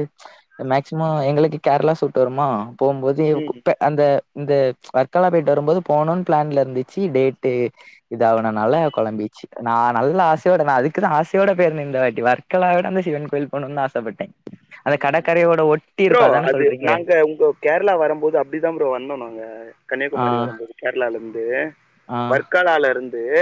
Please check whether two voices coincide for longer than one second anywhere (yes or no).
no